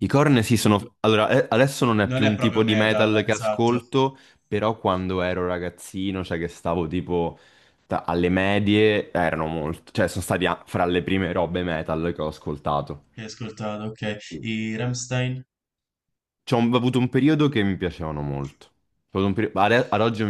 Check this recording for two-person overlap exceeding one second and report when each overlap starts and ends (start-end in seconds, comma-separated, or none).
2.1-3.8